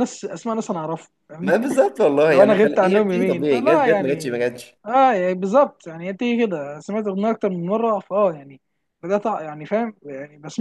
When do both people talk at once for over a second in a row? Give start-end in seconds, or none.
2.3-4.4